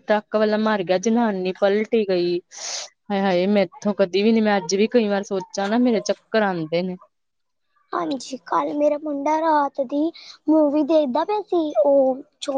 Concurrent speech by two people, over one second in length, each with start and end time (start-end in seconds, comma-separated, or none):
none